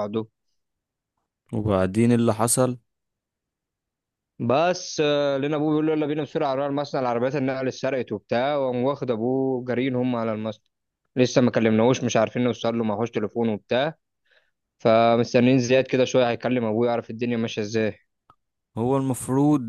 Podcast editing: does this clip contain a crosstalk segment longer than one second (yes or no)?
no